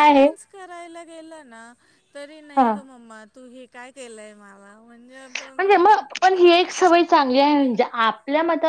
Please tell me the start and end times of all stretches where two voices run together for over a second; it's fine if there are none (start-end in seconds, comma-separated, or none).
none